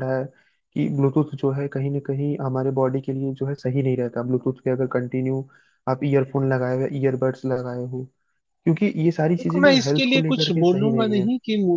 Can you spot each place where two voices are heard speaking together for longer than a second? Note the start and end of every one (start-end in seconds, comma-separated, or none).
9.4-11.2